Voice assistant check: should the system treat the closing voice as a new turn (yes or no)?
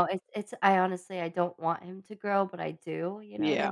yes